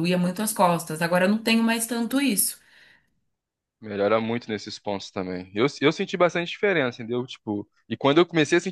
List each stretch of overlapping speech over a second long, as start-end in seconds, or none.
none